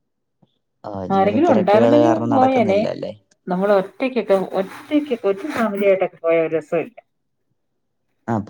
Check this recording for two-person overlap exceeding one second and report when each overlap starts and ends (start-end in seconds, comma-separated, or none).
1.2-2.8